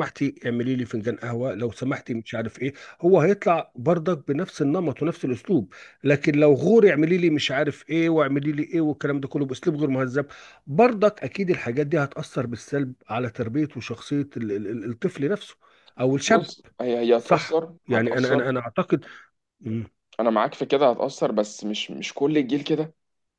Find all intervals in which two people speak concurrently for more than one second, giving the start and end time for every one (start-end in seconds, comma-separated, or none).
17.2-18.5